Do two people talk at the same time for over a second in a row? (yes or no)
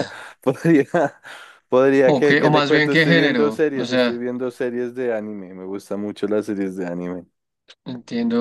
yes